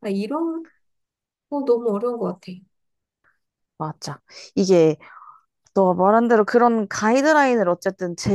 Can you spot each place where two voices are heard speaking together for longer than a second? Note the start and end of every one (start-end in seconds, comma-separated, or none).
none